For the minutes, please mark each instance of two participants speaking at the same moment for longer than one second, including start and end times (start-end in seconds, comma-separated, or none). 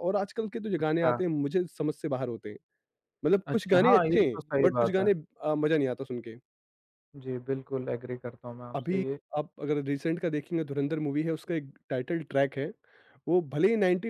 3.5-5.1